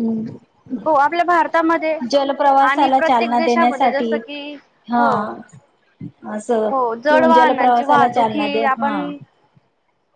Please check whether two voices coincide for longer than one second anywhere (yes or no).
yes